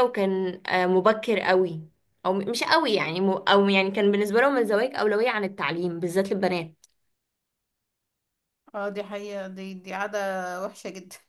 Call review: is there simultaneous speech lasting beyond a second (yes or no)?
no